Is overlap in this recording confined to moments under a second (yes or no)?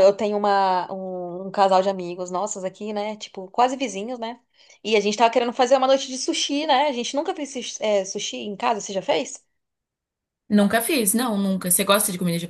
yes